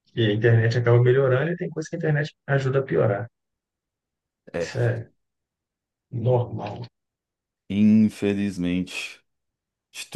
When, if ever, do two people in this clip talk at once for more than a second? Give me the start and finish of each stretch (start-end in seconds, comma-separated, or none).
none